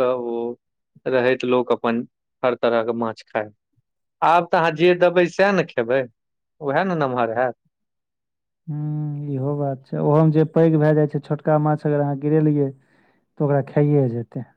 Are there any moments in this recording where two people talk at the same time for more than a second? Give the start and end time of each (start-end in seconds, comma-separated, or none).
none